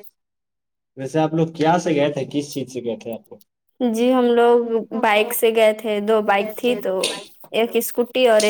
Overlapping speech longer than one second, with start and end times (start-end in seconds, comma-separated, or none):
none